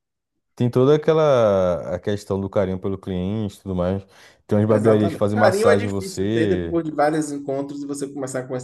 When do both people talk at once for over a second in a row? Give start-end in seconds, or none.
4.7-6.8